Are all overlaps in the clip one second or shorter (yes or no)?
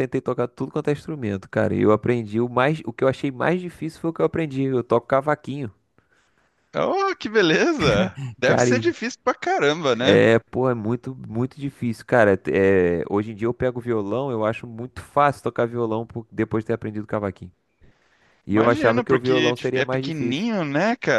no